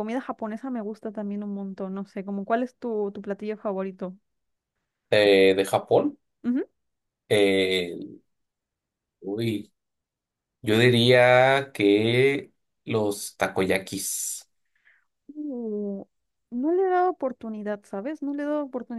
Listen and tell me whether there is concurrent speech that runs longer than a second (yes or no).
no